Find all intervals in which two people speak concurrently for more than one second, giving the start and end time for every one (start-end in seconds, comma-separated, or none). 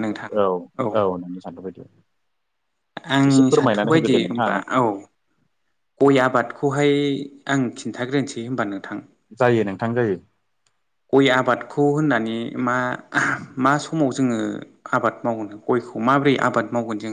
3.3-4.6